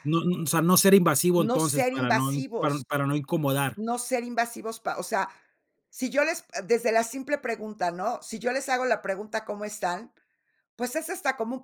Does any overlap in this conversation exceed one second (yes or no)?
yes